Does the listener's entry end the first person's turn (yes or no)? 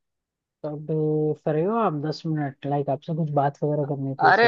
yes